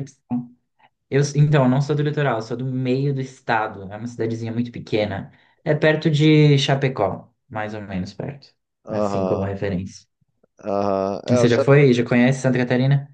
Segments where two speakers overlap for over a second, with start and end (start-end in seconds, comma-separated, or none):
none